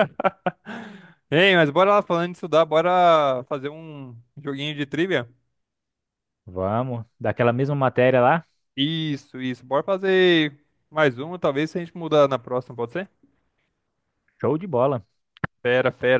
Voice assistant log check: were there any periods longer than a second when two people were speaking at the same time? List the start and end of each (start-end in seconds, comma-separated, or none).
none